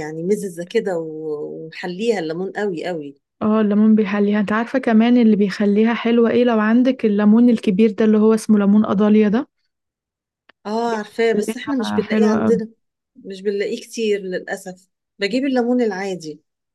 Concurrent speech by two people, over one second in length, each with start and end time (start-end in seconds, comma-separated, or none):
11.3-12.6